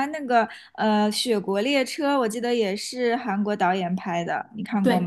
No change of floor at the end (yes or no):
no